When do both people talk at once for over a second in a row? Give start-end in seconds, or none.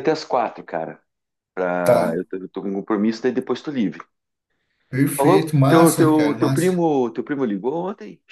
5.1-6.8